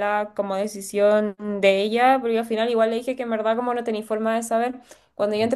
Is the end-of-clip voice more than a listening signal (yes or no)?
no